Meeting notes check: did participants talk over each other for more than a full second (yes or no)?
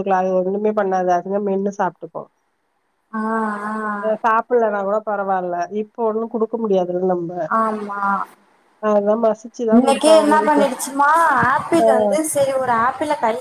no